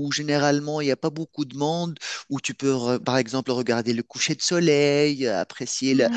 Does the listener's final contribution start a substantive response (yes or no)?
no